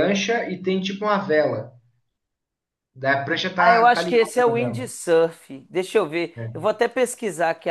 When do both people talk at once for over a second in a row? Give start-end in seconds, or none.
3.6-4.9